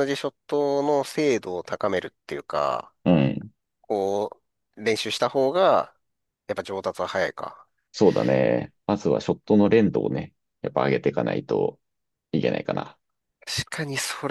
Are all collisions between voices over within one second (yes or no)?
yes